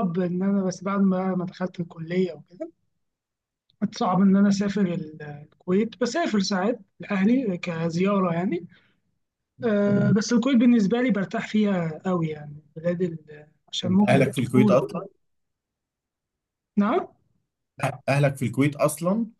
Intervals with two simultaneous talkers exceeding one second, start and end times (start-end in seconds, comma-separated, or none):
13.8-15.1